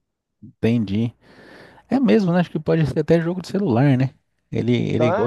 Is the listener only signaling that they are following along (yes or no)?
no